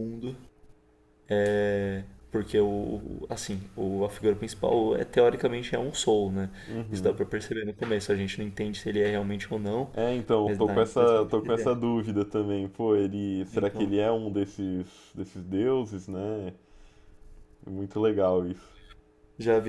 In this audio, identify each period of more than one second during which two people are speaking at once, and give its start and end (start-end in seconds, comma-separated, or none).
10.4-11.9